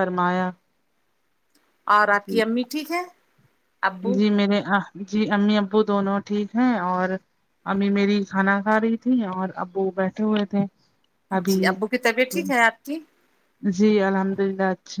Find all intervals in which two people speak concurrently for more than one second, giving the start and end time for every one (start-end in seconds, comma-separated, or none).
none